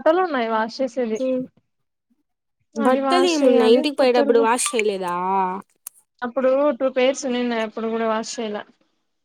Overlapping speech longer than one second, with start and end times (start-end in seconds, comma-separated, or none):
2.9-4.4